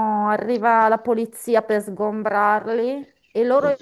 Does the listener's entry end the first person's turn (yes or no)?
no